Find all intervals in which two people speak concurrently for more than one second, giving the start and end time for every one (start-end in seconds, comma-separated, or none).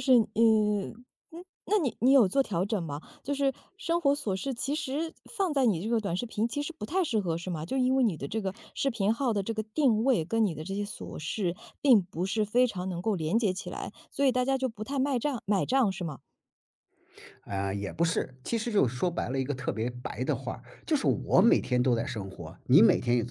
none